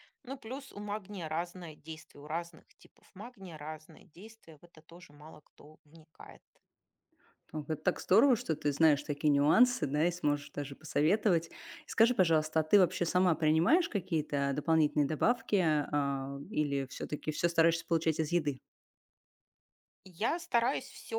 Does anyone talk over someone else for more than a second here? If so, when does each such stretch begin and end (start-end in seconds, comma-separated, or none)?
none